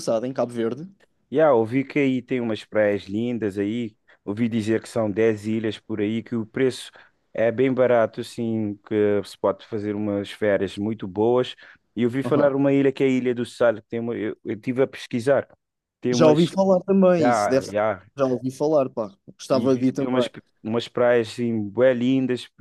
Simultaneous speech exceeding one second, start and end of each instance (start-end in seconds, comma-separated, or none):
none